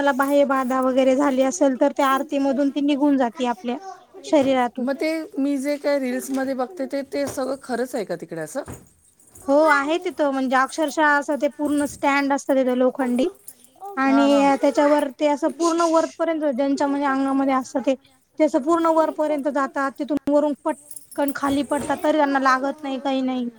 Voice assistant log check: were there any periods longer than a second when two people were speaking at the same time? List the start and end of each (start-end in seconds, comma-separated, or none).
none